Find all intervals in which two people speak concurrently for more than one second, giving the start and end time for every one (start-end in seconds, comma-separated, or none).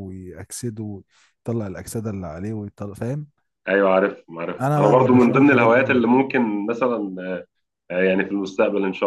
4.6-6.0